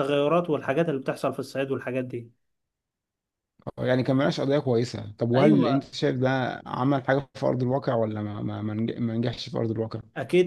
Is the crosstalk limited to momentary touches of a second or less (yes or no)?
yes